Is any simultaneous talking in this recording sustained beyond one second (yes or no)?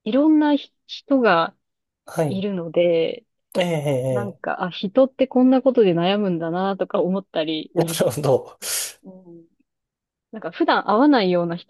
no